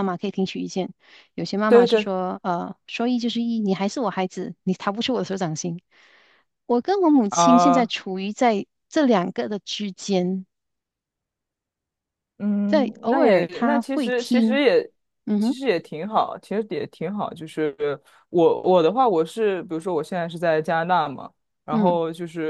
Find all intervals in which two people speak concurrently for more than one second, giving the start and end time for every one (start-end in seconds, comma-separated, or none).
12.7-14.6